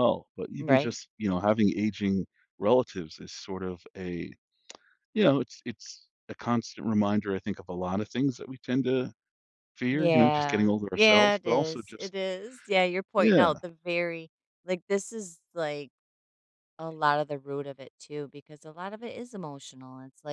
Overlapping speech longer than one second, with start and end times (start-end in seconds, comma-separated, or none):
9.9-12.1